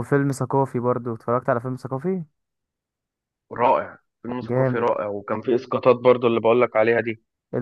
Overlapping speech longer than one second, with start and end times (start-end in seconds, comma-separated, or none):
none